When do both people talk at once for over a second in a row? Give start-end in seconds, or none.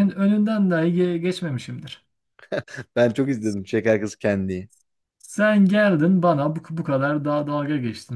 none